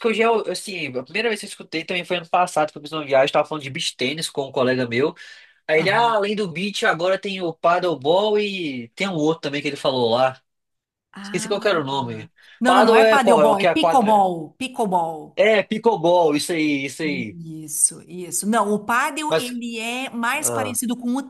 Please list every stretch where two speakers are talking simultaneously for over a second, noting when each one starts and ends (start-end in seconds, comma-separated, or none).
12.7-14.3